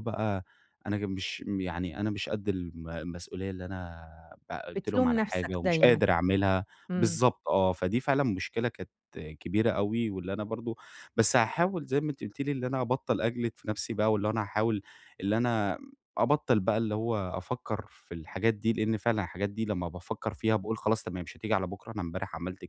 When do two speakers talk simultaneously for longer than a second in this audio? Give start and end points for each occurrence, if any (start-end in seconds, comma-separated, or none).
4.8-6.0